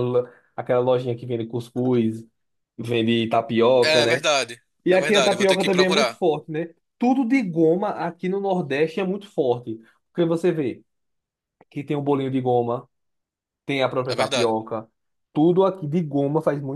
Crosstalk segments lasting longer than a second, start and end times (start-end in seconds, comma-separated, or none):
4.8-6.2